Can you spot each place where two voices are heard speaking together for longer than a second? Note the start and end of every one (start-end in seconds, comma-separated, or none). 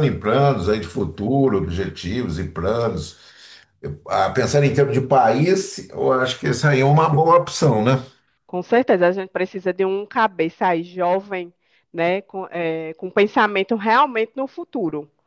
none